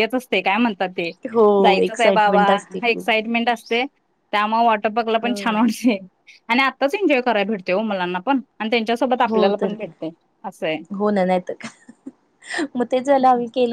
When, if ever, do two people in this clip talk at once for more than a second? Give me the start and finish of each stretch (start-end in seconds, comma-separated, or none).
1.6-3.0